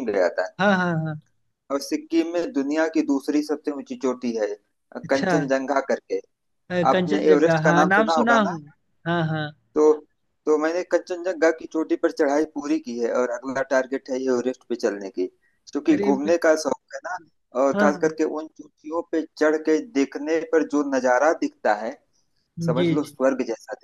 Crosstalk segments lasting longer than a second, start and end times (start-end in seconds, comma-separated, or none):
6.9-8.6